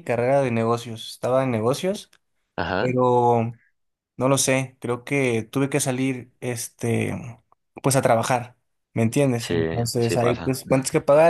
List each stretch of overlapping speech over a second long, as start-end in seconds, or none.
9.3-10.6